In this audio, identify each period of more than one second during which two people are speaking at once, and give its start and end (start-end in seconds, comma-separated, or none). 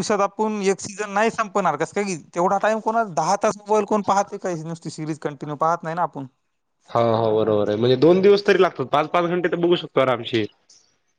none